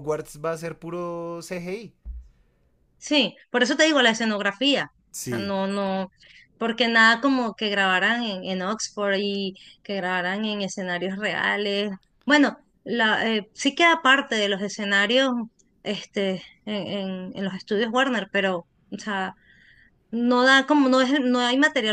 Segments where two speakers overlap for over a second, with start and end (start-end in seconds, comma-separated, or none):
none